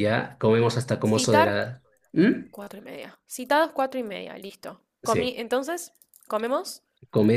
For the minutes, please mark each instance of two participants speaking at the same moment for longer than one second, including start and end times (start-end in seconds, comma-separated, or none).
none